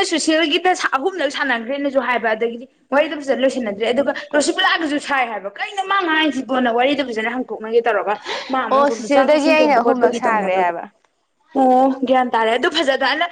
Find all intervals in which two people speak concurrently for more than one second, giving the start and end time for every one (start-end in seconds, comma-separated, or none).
8.7-10.7